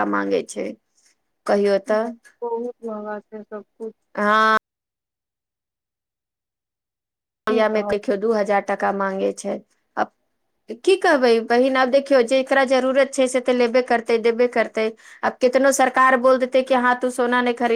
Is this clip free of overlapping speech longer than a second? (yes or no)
yes